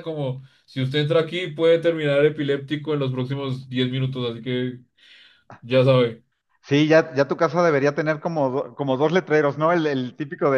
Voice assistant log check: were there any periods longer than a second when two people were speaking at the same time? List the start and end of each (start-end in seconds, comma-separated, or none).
none